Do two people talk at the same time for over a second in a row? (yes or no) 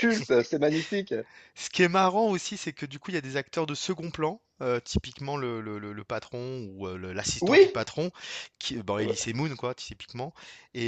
no